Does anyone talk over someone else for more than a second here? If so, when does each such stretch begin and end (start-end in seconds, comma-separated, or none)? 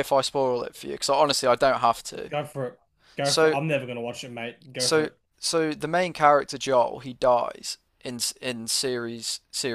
none